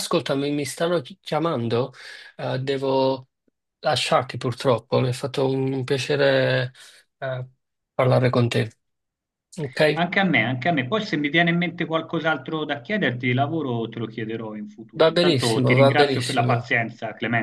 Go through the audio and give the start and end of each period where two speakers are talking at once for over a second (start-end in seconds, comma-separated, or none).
15.0-16.6